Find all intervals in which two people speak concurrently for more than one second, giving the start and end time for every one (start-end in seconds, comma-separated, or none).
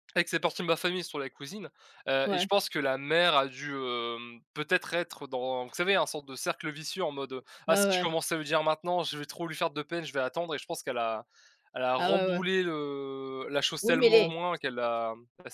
none